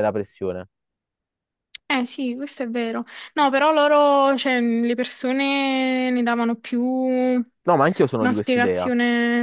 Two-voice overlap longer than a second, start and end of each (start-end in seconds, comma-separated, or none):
7.7-8.9